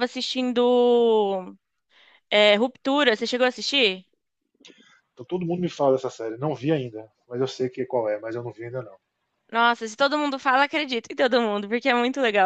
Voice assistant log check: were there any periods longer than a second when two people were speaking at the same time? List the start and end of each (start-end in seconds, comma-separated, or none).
none